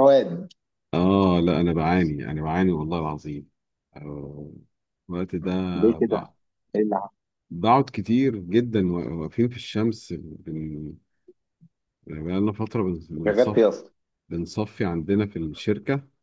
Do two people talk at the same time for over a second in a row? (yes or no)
no